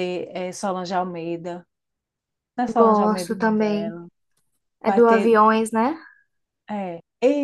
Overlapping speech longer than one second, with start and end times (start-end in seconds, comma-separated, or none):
2.7-4.0